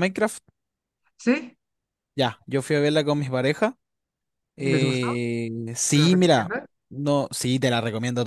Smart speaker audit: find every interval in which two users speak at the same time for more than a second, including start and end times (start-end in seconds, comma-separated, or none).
none